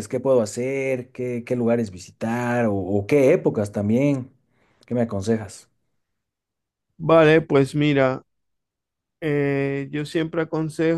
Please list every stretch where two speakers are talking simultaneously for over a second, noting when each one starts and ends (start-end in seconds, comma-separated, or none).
none